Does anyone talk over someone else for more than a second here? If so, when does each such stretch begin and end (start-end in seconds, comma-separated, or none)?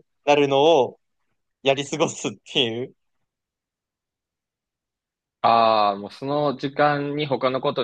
none